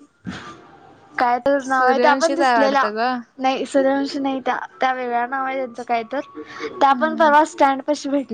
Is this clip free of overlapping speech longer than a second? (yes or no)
no